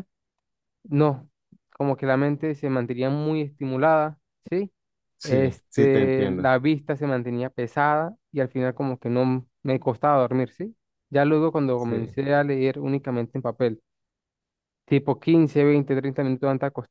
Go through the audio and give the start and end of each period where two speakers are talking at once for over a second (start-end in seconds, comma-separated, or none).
5.2-6.5